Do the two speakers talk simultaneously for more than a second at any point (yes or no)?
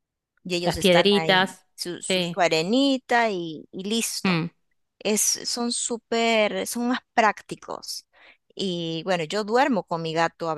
yes